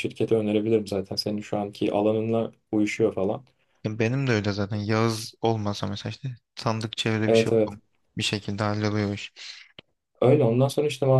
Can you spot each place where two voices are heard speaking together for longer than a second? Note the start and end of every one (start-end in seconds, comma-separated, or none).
none